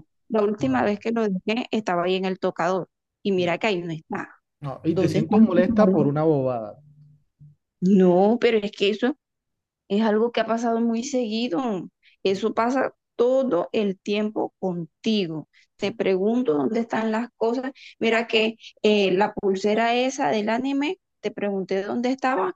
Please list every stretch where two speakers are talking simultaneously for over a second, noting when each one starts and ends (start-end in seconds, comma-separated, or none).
4.9-6.1